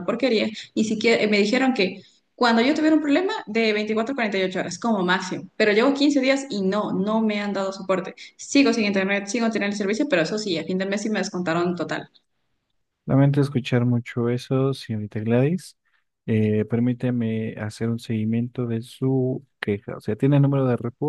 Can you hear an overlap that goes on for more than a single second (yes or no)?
no